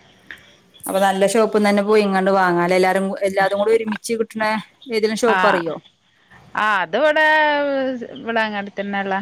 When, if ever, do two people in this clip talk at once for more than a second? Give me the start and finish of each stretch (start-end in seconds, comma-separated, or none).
none